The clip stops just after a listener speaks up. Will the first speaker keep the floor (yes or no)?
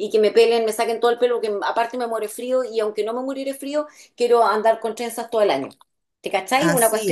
yes